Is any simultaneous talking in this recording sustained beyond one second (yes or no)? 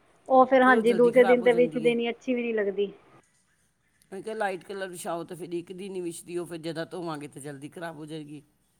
yes